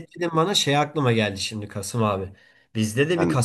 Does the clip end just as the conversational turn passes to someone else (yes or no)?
no